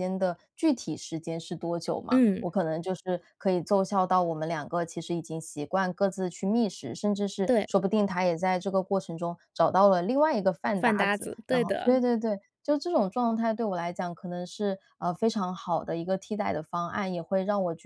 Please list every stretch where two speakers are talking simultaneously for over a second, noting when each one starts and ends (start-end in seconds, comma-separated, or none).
10.7-12.0